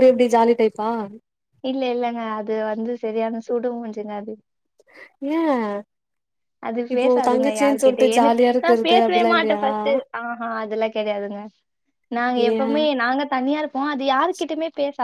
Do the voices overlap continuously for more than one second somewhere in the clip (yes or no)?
yes